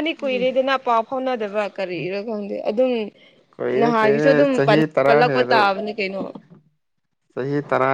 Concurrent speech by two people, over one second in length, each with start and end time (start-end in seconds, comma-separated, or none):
3.8-5.7